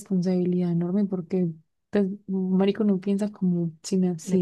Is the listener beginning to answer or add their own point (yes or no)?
yes